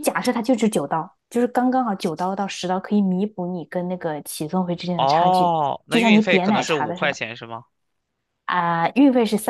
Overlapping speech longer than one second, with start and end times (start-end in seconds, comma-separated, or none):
5.0-7.2